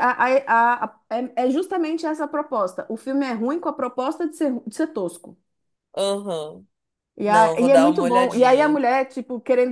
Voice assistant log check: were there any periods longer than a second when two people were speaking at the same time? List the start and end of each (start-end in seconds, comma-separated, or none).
7.2-8.8